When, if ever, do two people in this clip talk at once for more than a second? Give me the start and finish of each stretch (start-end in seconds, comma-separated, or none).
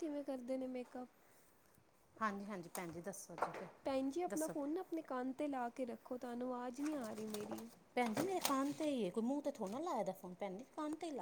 none